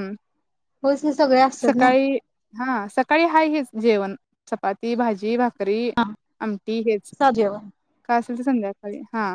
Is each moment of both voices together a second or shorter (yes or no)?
yes